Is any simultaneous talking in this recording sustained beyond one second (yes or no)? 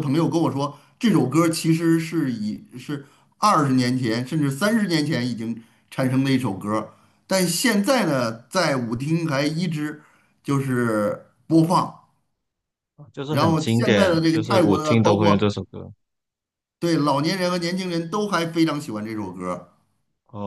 yes